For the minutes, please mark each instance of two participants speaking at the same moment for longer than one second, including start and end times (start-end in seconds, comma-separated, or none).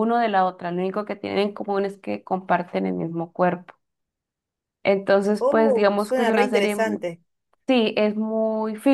5.4-7.0